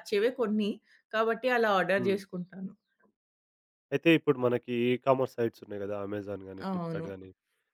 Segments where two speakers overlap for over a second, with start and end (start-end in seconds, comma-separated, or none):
none